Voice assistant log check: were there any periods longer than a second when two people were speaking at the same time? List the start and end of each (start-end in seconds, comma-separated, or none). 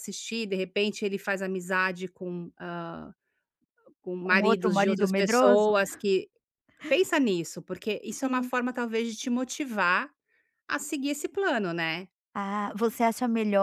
4.2-5.7